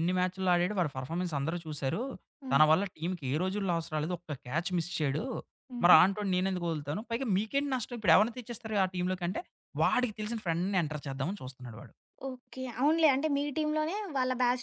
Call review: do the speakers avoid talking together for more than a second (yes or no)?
yes